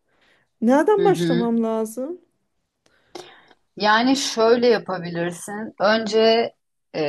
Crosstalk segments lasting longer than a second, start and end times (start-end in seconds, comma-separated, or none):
none